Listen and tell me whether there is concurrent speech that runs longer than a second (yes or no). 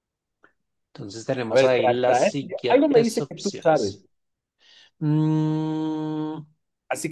yes